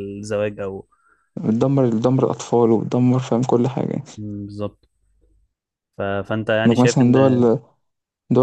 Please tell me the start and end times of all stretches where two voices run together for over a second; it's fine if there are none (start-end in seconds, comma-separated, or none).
none